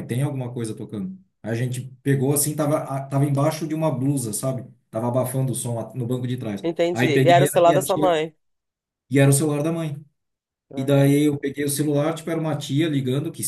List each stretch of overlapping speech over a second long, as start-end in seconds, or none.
6.6-8.2